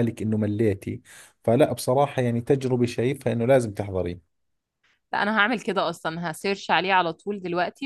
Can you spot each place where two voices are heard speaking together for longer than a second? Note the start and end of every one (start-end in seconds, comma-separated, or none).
none